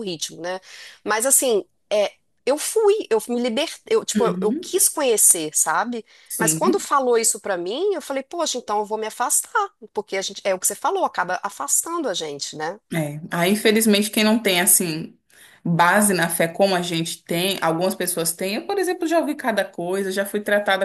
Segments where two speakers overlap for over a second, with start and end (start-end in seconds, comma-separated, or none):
none